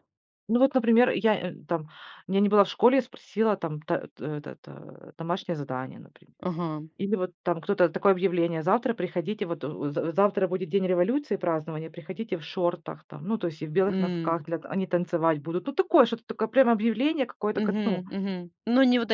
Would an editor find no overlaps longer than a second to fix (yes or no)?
yes